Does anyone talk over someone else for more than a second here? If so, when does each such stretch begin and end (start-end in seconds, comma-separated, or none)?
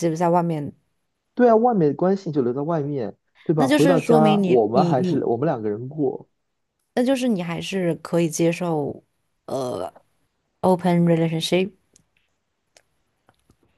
3.6-5.2